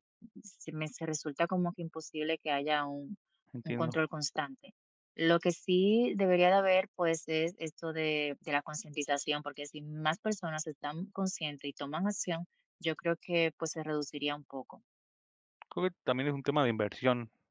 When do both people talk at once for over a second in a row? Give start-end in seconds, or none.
none